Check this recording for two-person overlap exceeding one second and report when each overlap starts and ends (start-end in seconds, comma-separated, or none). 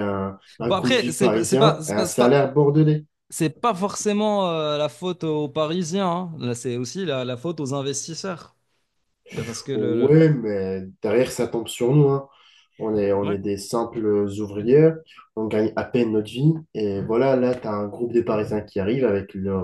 0.7-2.4